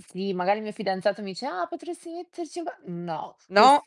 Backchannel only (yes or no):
yes